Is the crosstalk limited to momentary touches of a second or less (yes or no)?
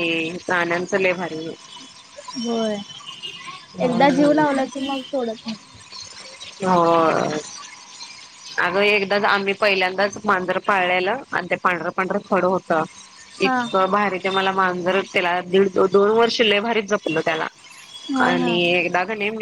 yes